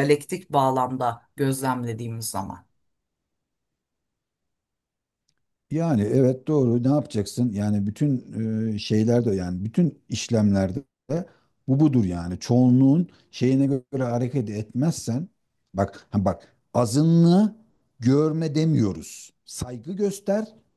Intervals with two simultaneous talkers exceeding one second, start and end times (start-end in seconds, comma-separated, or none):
none